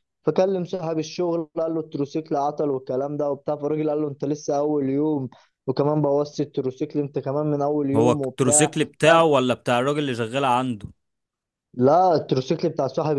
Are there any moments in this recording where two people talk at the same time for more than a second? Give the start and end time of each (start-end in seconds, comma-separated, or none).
7.9-9.3